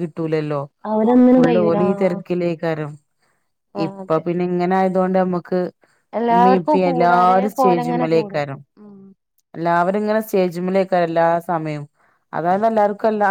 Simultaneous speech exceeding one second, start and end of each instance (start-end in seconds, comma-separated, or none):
6.3-8.4